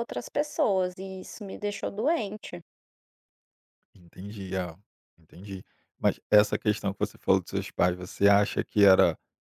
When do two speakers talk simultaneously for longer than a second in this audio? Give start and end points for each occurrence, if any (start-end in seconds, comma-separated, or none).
none